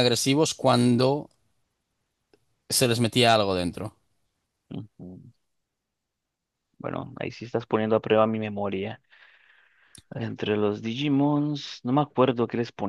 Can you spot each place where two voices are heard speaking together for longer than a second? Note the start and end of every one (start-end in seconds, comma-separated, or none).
none